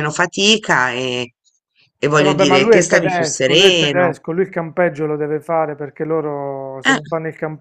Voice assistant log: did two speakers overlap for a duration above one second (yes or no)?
yes